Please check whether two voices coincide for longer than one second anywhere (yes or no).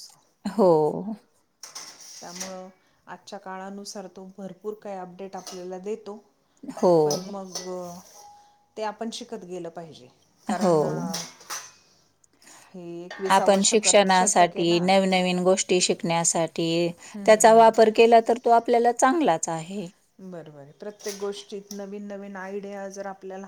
yes